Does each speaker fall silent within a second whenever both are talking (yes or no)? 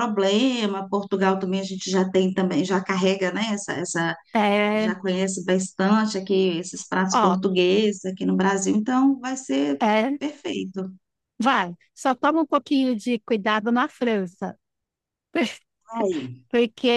yes